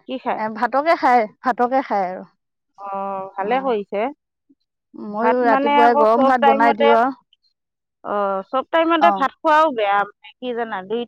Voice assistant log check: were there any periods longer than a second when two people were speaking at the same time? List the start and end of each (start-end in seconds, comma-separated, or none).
5.2-6.9